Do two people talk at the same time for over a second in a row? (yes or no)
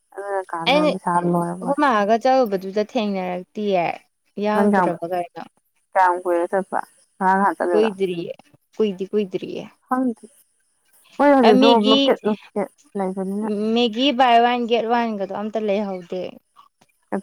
no